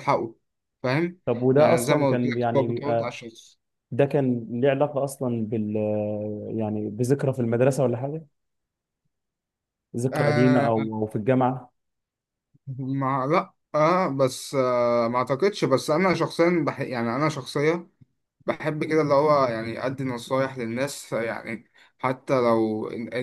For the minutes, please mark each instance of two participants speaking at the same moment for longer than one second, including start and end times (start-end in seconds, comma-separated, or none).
1.6-3.2